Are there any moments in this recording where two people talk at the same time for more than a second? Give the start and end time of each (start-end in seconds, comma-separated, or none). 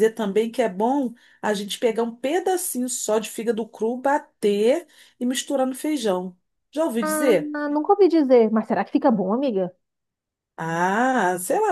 none